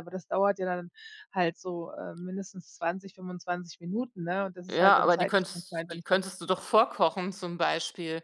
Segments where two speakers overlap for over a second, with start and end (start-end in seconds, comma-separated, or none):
4.7-6.2